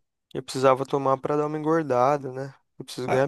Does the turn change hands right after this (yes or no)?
yes